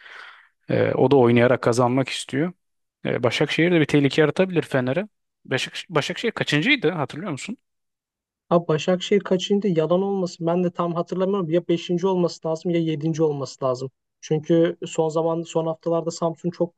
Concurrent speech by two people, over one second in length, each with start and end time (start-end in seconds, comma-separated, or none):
none